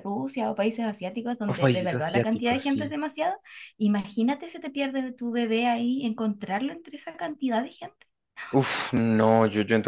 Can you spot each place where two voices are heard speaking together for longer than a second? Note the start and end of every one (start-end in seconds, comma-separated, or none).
1.4-2.8